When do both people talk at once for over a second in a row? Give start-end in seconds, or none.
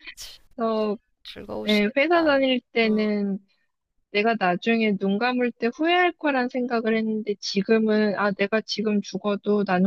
1.7-3.0